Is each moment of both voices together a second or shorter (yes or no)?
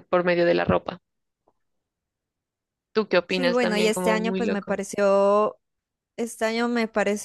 no